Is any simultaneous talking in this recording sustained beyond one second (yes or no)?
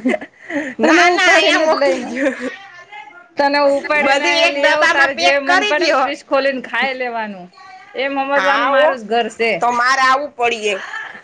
yes